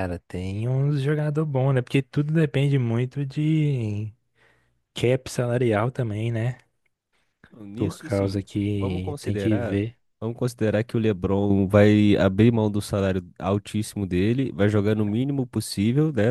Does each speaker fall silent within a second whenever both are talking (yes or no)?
no